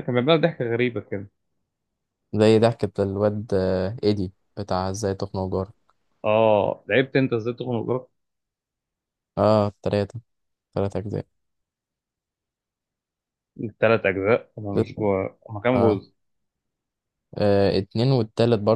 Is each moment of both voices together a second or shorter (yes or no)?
yes